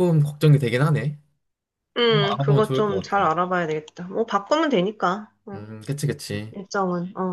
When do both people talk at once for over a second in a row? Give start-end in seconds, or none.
2.1-3.3